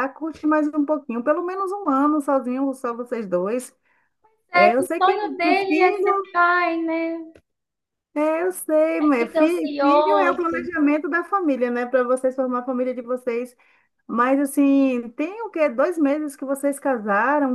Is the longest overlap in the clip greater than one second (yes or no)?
yes